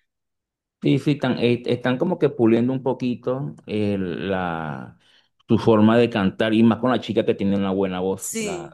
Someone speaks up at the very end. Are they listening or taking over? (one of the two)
listening